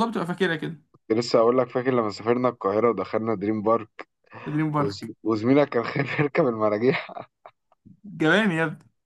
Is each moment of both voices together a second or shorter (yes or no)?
yes